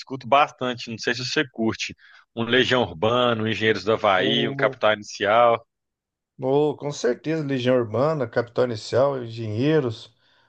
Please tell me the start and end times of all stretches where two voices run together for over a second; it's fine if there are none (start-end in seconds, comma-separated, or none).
none